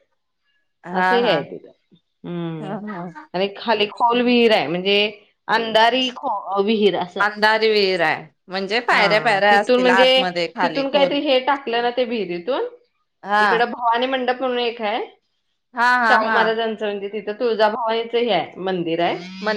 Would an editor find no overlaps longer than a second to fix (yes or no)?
yes